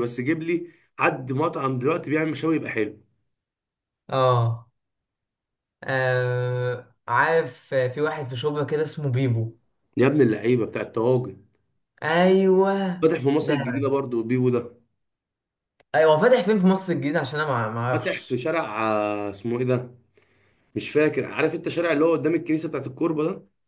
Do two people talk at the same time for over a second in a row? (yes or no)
no